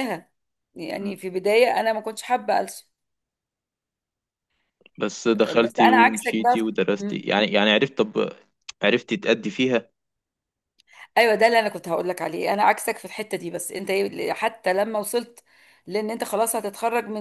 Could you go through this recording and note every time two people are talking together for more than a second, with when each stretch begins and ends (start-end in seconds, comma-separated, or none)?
5.6-7.3